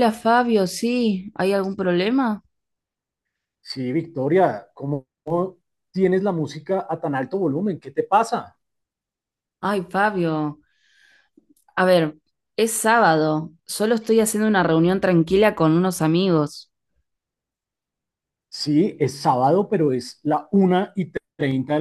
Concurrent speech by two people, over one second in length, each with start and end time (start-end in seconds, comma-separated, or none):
none